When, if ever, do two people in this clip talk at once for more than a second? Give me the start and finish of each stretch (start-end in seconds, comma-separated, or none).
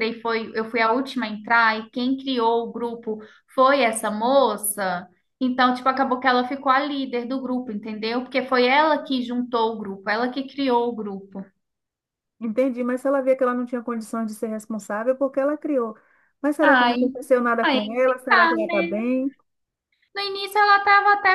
17.6-19.1